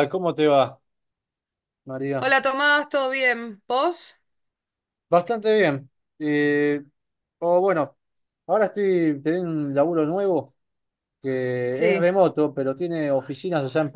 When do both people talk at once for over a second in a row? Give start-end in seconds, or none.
none